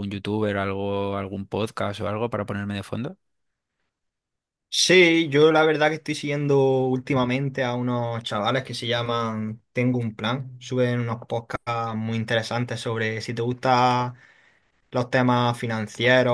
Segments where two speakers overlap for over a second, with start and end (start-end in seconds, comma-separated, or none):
none